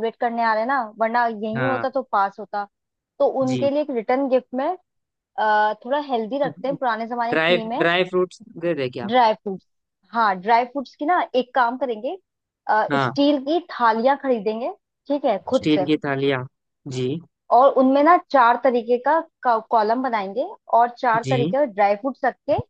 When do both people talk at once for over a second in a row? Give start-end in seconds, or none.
none